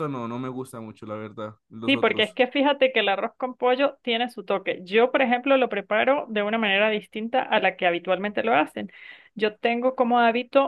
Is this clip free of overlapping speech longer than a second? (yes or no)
yes